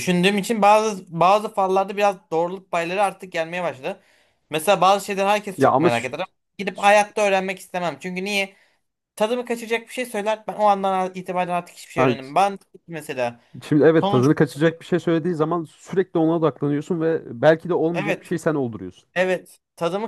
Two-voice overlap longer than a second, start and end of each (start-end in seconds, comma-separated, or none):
none